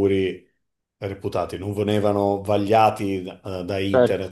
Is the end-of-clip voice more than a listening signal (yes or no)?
no